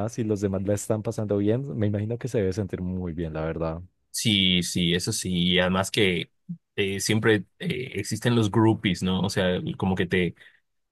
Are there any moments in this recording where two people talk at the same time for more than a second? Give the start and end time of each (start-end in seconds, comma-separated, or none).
none